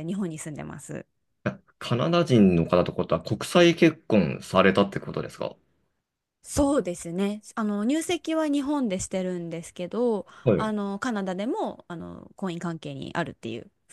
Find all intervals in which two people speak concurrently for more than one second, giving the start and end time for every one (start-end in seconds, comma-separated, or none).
none